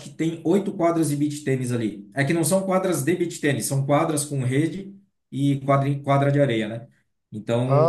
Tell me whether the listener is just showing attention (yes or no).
yes